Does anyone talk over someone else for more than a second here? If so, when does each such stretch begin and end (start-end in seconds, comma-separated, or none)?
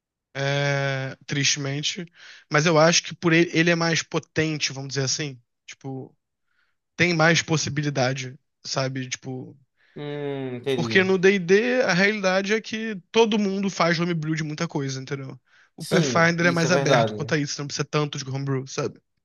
15.8-17.4